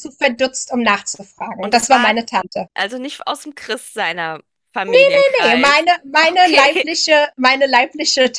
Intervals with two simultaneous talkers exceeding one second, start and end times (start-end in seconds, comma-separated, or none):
5.4-6.9